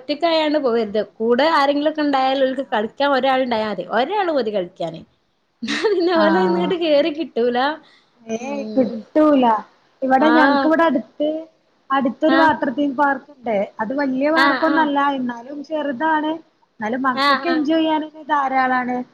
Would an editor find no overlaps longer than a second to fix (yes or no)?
yes